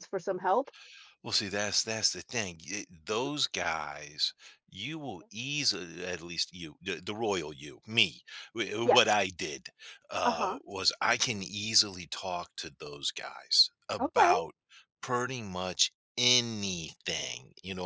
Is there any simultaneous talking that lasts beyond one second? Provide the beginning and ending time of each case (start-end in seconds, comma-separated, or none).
none